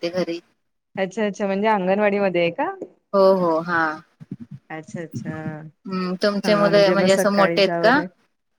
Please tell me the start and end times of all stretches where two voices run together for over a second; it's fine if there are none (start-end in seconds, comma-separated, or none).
6.5-8.0